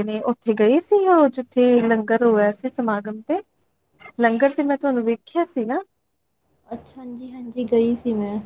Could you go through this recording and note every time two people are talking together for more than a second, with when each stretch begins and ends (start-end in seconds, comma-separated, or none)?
none